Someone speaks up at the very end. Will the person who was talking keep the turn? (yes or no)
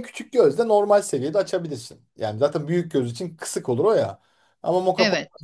yes